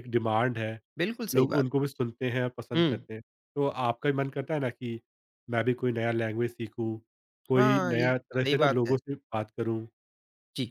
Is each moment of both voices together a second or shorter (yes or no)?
no